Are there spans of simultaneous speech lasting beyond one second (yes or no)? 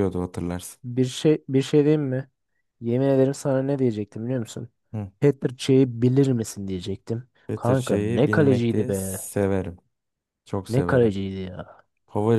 yes